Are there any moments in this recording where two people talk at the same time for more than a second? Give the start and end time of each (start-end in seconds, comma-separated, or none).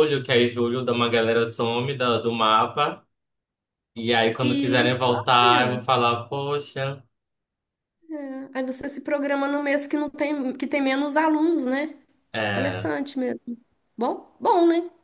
4.4-5.8